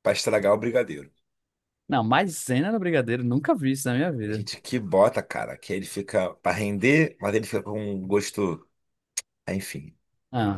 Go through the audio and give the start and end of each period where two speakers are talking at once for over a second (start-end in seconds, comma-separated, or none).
none